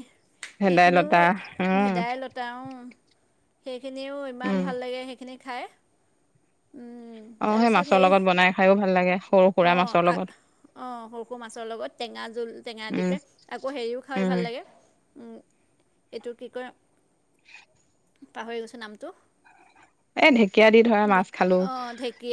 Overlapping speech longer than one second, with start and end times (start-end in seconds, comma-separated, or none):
none